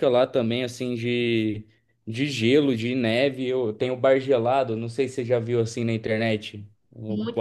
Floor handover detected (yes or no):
yes